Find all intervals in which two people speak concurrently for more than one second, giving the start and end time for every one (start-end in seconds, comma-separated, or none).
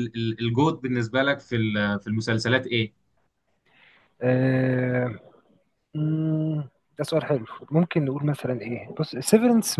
none